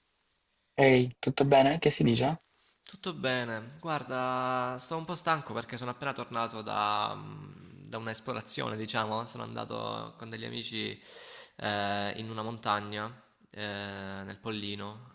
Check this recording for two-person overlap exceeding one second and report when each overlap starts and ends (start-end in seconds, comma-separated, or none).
none